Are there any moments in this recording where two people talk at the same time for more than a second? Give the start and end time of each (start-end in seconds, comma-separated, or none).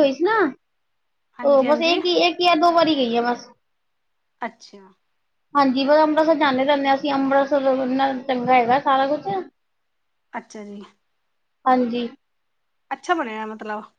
none